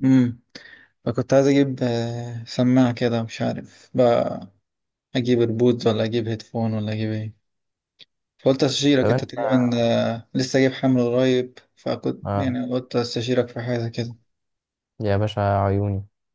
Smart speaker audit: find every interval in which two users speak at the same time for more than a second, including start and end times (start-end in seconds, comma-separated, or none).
none